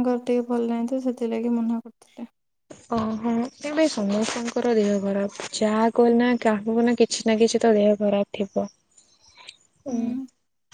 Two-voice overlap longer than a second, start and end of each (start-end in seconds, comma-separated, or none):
none